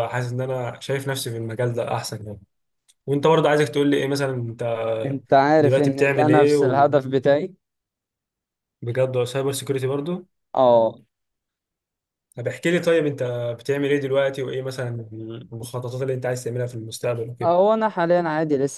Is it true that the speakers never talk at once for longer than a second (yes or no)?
no